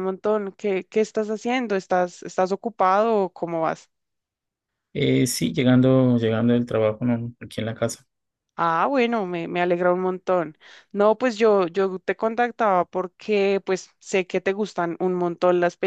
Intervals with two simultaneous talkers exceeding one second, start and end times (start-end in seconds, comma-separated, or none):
none